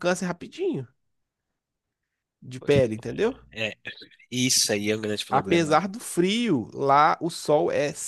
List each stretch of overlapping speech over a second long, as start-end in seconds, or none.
none